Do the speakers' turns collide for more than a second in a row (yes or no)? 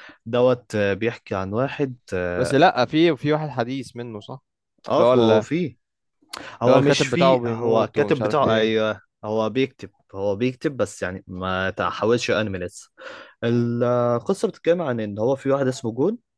yes